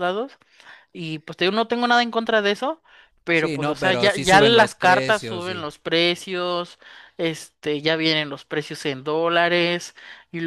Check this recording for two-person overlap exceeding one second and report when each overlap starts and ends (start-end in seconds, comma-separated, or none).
3.3-5.7